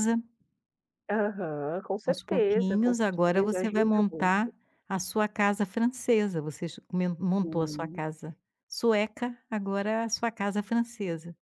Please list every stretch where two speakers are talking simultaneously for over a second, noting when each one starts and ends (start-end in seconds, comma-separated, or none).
2.0-4.5